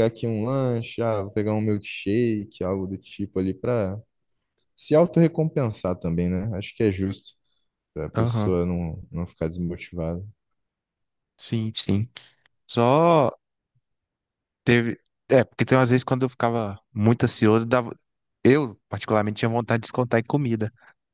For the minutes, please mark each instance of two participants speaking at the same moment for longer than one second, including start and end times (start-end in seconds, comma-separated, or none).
none